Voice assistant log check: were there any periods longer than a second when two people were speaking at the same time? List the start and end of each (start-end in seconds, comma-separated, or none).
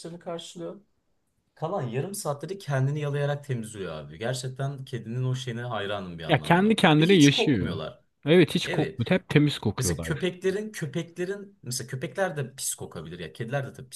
6.3-7.8